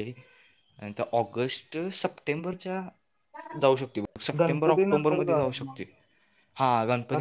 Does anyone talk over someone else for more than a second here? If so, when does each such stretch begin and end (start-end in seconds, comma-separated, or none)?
4.4-5.8